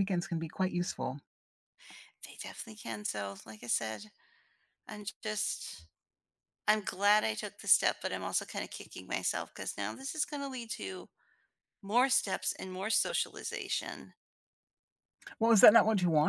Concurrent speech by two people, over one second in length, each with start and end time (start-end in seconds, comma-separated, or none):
none